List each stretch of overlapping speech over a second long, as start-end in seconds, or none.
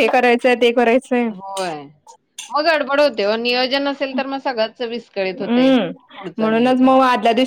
none